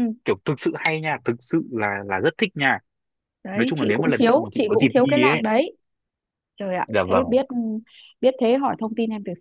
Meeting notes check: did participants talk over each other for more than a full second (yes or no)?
yes